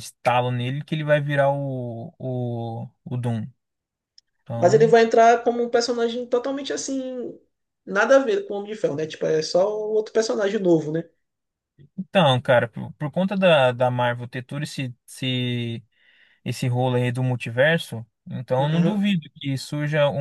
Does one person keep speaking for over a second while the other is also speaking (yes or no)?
no